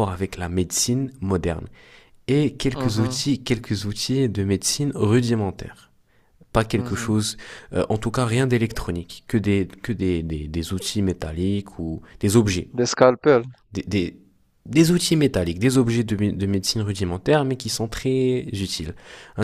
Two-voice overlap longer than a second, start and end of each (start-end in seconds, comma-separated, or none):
none